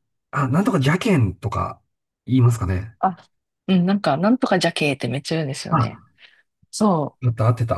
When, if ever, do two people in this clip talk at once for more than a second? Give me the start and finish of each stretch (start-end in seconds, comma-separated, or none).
none